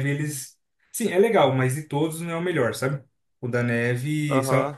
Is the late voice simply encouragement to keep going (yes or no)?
yes